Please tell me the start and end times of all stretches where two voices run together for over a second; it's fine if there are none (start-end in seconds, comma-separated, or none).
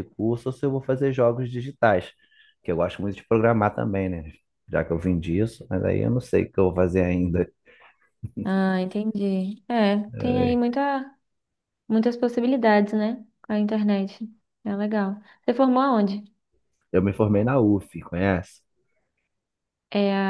none